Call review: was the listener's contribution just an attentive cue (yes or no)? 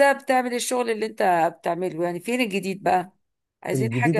no